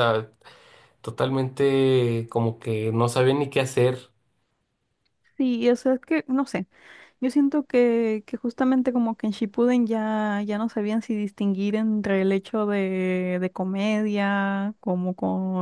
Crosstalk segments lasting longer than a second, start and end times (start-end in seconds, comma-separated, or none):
none